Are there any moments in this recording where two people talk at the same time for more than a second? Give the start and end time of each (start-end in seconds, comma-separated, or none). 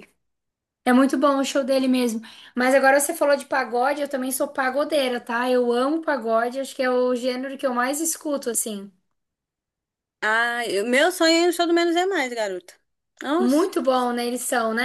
none